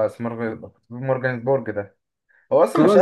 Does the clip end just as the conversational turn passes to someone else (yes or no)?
yes